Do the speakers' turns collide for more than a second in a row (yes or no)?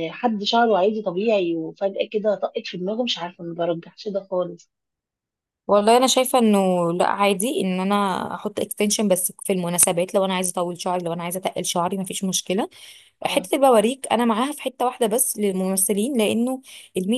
no